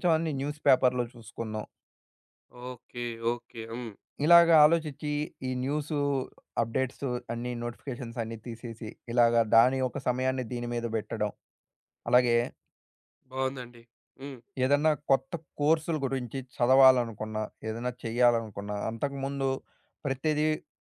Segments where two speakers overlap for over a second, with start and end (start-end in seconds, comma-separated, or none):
none